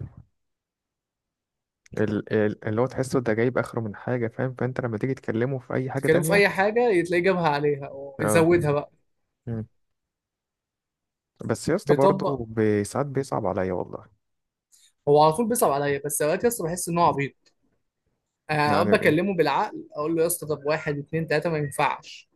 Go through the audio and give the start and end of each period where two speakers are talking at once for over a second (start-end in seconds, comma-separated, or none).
none